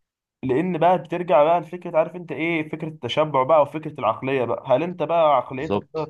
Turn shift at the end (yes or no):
no